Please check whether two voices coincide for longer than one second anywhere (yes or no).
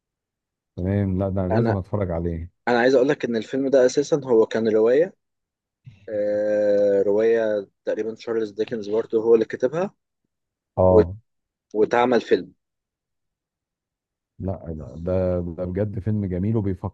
no